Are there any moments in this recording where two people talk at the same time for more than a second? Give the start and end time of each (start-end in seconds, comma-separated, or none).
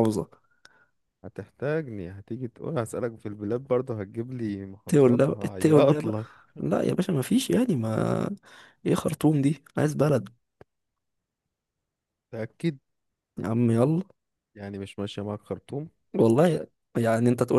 4.8-6.2